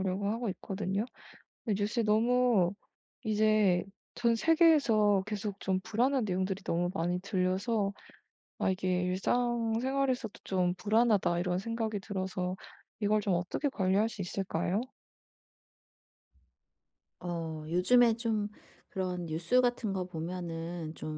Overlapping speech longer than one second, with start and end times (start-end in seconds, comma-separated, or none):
none